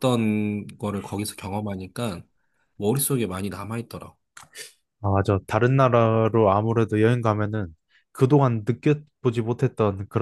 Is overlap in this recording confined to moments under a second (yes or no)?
yes